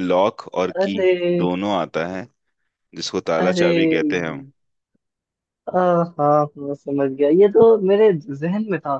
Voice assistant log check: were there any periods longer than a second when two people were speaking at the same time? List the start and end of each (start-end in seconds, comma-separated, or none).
none